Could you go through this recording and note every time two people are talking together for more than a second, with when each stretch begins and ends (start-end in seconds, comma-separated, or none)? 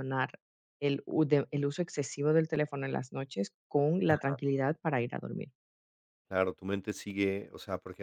none